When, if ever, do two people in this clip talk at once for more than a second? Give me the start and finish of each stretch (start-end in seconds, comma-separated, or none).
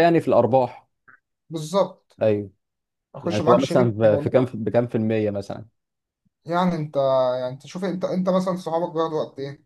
3.2-4.5